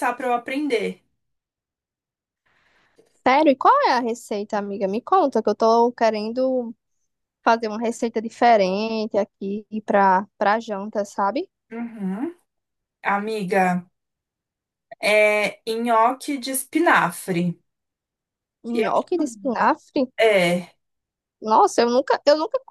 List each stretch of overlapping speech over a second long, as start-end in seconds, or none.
none